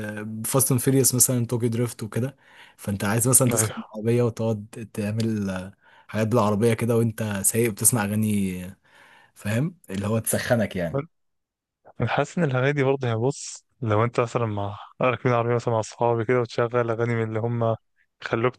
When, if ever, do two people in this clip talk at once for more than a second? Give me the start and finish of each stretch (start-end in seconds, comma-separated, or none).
none